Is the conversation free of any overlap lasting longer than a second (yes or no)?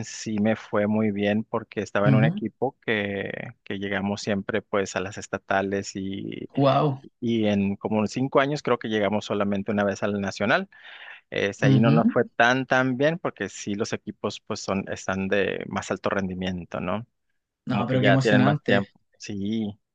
no